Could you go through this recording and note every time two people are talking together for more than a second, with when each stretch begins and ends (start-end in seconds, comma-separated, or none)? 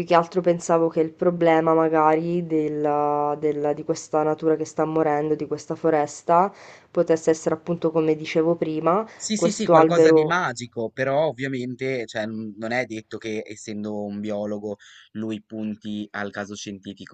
9.2-10.4